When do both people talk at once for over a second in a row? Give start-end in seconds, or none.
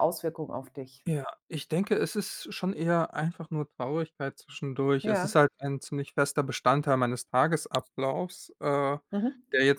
none